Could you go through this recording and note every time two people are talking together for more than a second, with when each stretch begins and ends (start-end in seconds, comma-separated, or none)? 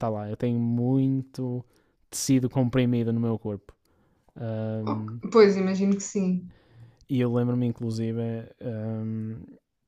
none